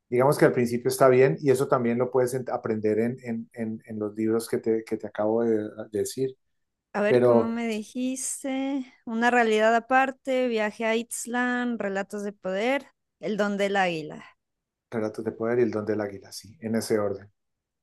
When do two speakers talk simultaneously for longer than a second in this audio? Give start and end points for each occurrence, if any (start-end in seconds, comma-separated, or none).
none